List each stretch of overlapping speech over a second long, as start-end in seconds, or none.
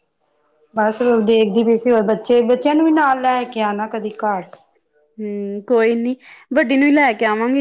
none